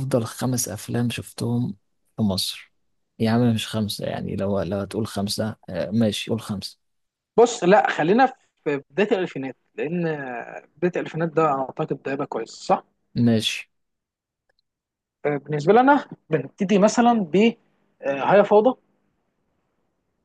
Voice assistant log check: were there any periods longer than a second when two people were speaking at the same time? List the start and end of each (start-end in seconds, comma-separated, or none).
none